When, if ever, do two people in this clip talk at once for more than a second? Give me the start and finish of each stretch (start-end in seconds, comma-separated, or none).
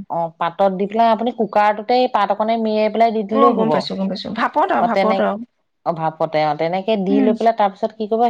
3.4-5.2